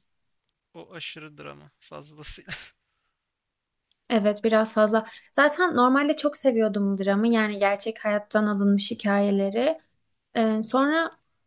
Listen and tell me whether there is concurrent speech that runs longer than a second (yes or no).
no